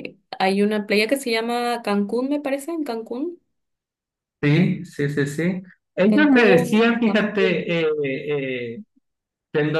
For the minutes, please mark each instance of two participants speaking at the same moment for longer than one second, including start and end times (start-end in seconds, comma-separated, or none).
6.1-7.7